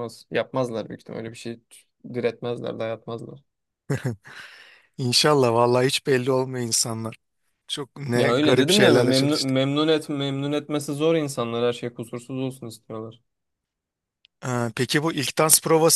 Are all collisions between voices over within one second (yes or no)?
no